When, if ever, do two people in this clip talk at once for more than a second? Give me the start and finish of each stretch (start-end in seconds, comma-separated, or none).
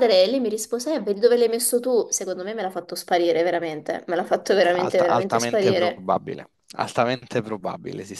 4.7-6.0